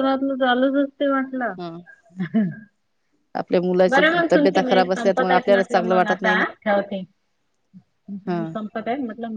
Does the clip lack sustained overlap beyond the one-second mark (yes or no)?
no